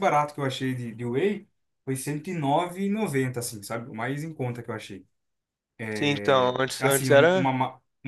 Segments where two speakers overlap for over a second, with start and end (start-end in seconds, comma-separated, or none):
6.1-7.5